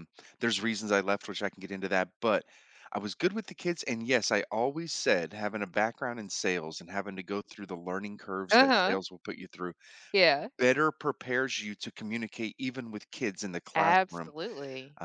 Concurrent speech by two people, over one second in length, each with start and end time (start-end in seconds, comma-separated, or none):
none